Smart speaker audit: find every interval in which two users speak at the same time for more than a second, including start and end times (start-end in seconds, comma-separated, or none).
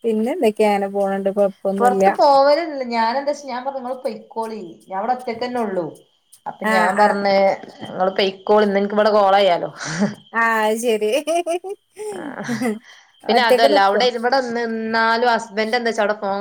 none